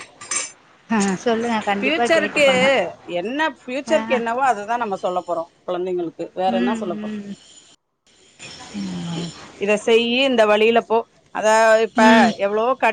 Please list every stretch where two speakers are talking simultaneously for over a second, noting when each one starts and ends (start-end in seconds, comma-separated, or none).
none